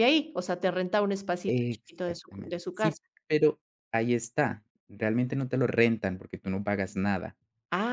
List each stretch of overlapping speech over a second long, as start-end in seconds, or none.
1.5-3.0